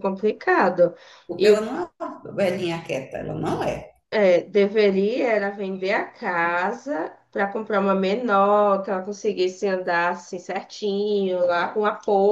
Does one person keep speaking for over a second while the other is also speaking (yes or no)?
no